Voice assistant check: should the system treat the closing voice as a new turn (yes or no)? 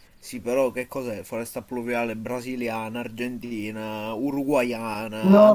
yes